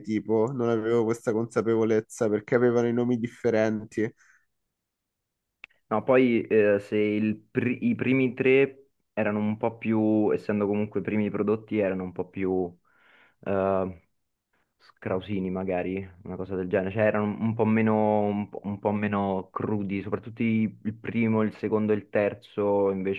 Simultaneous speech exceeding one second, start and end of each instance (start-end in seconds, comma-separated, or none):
none